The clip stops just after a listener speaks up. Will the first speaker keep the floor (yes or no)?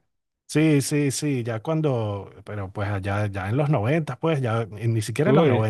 yes